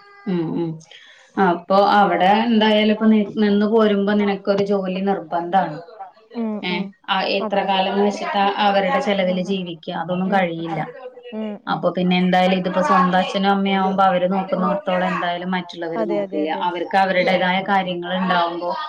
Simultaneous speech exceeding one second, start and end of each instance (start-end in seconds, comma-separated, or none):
16.0-18.2